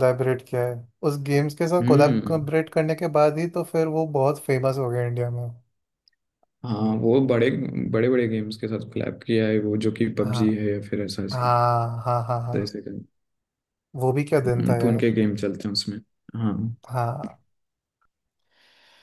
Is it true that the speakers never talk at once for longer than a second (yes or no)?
yes